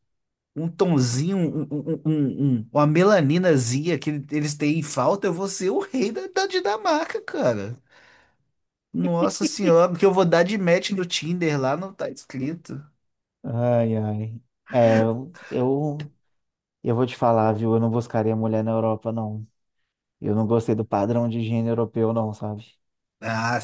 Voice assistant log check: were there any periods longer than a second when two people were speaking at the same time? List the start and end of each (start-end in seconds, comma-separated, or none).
none